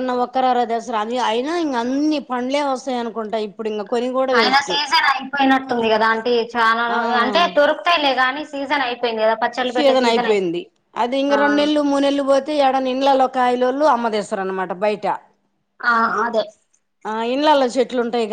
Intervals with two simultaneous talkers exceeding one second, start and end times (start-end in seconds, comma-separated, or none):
none